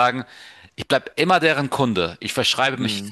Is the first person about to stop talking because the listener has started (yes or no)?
no